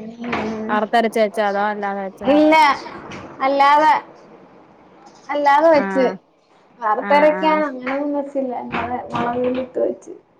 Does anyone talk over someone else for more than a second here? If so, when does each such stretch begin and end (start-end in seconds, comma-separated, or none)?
none